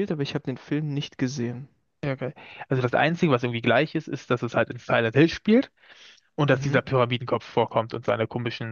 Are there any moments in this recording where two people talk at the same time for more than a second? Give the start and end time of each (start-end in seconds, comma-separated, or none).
none